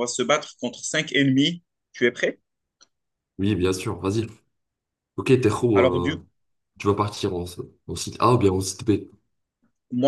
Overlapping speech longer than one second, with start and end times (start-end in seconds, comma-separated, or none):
none